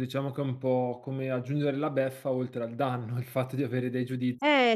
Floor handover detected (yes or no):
yes